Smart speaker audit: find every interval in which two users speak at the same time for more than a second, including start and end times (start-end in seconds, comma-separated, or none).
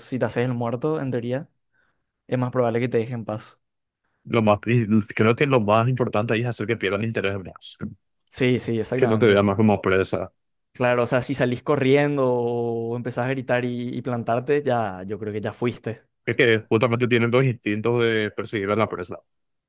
none